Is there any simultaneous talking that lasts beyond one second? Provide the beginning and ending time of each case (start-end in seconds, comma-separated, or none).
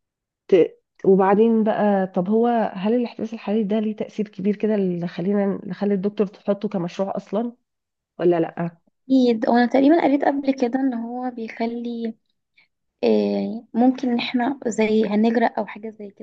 none